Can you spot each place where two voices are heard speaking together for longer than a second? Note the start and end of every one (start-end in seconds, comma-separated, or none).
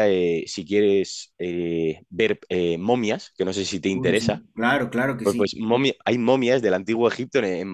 none